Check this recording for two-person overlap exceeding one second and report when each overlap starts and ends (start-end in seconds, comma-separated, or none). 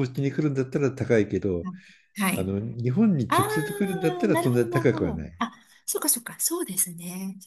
3.3-5.3